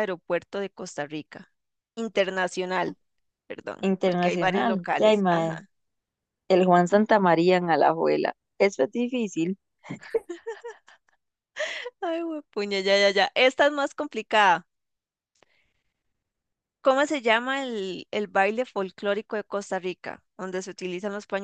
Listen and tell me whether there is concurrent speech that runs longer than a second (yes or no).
yes